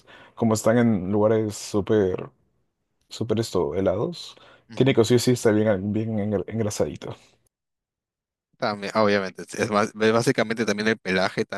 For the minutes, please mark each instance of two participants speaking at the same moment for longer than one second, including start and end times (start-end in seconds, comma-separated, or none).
none